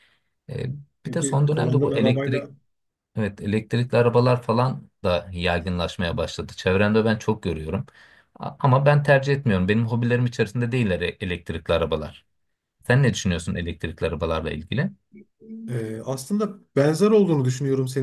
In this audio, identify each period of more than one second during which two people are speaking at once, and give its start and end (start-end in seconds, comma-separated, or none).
1.1-2.5